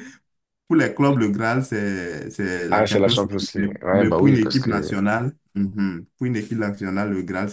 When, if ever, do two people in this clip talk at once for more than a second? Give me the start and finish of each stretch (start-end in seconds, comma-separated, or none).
2.7-4.9